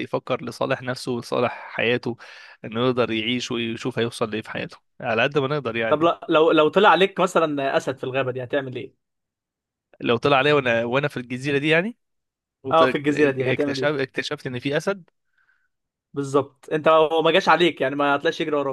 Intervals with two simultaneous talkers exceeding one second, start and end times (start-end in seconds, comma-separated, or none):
12.7-13.9